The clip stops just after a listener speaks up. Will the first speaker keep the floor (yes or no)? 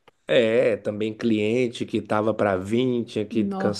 yes